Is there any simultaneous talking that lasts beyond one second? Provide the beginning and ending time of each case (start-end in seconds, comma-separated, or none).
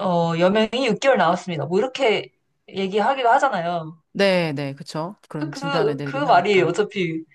5.4-6.8